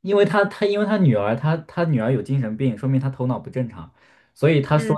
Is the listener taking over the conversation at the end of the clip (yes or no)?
no